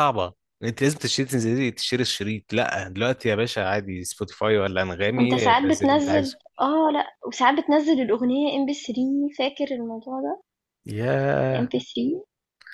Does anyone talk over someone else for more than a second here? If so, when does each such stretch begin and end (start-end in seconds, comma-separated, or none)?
5.2-6.5